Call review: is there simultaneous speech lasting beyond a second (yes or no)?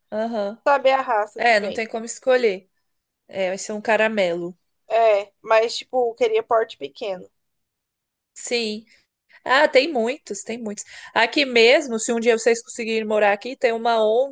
no